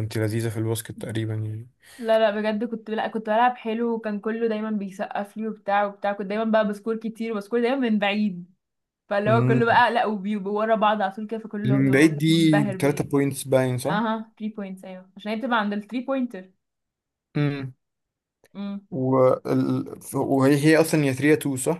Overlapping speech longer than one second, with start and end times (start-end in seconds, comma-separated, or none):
11.7-13.1